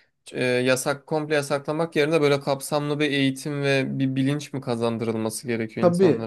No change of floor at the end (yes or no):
no